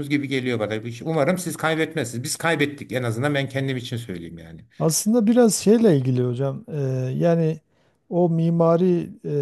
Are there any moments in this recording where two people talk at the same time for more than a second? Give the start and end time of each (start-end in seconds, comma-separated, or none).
none